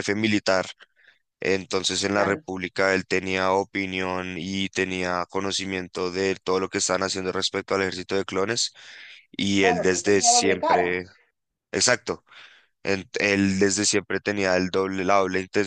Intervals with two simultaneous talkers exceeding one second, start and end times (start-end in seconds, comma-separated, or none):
9.6-10.9